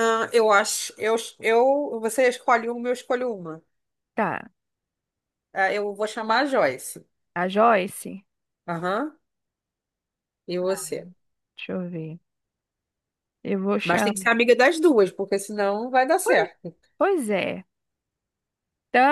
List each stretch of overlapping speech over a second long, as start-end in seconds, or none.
none